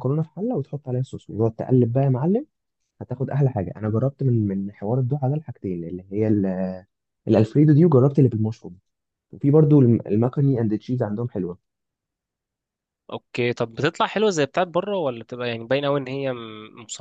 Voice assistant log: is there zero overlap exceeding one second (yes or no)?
yes